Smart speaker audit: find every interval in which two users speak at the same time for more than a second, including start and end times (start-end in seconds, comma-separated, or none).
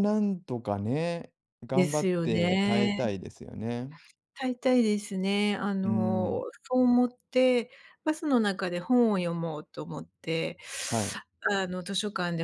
1.7-3.0